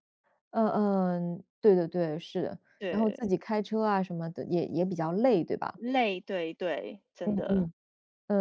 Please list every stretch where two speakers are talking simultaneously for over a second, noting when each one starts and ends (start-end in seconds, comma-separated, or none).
none